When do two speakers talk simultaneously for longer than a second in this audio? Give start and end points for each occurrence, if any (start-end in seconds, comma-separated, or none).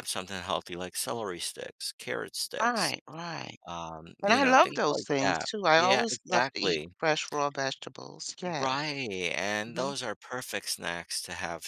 4.2-6.9